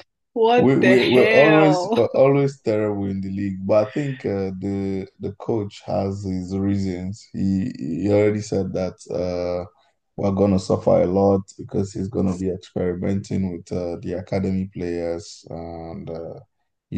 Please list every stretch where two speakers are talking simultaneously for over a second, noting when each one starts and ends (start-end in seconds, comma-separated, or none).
0.6-2.1